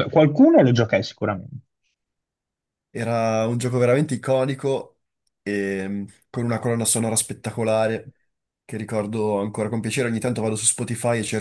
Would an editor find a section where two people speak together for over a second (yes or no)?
no